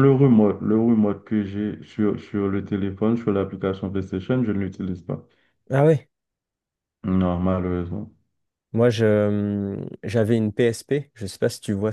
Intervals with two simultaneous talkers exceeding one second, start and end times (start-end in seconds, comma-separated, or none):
none